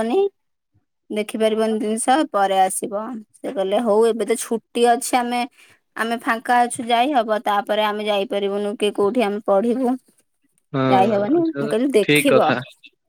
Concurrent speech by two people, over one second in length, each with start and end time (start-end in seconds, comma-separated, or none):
10.9-12.5